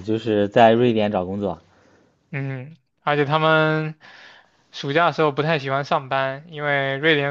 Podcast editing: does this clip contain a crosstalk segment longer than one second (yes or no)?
no